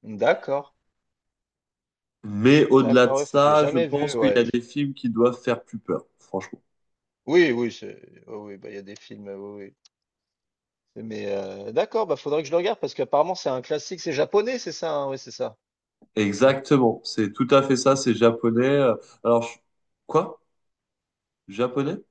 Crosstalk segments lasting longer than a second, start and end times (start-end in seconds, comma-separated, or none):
2.7-4.4